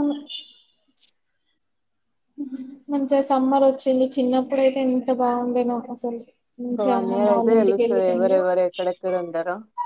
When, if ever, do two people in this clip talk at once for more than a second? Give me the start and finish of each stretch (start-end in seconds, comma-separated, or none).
6.7-8.4